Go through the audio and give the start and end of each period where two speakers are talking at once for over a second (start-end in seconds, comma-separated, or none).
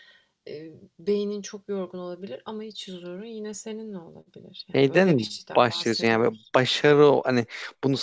4.8-6.5